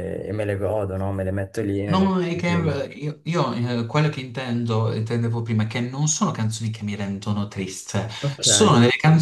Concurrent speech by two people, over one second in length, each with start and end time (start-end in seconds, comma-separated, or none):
none